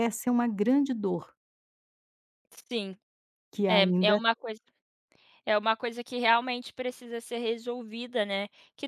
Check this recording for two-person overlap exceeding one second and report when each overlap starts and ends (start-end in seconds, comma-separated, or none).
none